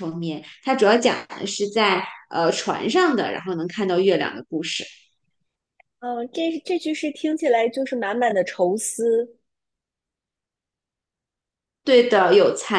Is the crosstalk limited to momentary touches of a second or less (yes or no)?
yes